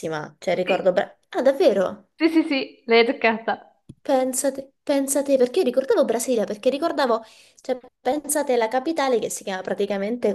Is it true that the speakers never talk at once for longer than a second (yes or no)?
yes